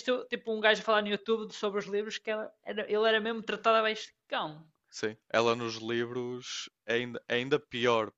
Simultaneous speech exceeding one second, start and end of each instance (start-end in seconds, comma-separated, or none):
none